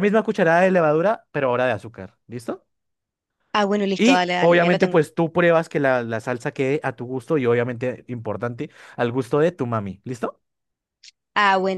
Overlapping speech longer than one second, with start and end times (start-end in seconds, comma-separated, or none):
3.8-5.0